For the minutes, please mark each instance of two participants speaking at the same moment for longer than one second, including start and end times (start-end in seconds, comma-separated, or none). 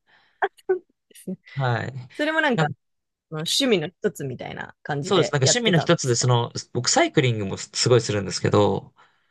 5.0-6.3